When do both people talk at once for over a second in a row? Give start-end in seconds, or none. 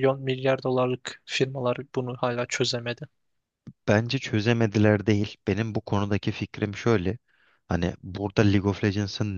none